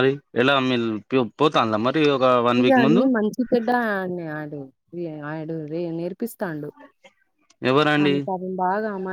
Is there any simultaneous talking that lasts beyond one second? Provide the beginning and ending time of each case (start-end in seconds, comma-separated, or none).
none